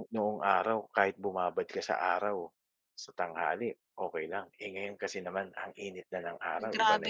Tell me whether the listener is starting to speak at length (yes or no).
yes